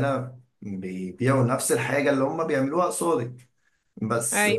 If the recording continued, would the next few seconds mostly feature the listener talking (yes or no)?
no